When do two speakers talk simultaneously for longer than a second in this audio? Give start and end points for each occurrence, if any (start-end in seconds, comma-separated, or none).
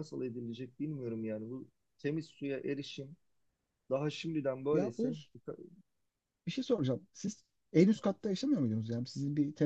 none